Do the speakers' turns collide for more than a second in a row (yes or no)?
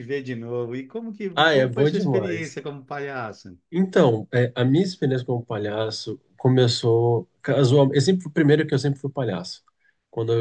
yes